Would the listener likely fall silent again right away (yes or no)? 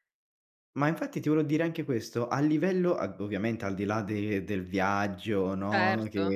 yes